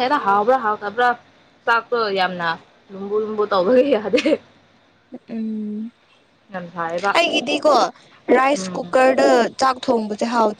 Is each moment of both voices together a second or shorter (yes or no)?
yes